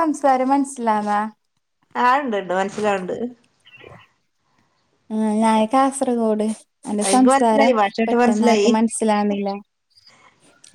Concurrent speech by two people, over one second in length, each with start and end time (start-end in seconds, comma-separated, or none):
7.1-8.7